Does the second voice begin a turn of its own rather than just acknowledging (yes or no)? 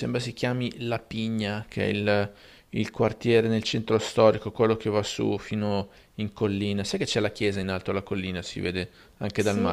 yes